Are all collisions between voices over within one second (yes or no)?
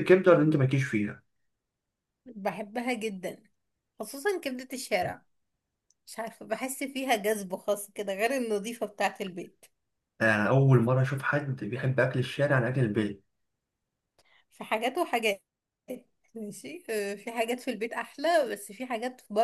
yes